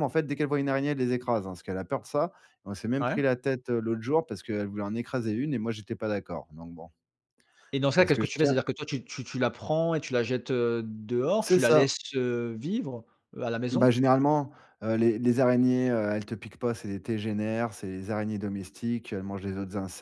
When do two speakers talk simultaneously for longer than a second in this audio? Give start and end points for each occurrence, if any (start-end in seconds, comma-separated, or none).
none